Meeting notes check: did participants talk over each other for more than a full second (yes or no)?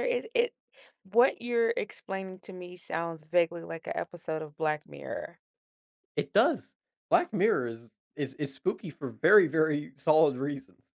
no